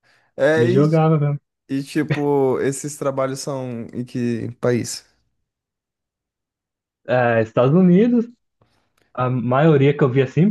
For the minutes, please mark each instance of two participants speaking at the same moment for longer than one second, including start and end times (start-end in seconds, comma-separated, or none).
none